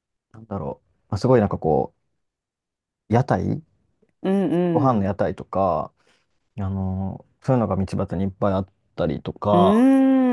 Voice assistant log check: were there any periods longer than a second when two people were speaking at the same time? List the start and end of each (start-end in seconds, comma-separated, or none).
none